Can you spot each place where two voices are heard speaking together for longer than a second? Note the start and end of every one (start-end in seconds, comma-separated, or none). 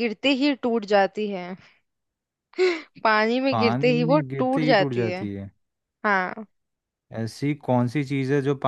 3.5-5.2